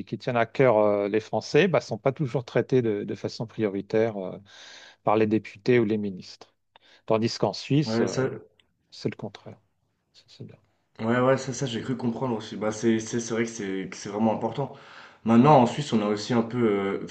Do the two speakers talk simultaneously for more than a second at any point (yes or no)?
no